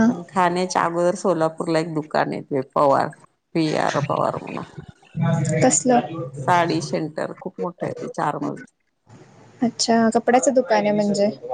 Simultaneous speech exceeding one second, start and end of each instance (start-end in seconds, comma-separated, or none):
none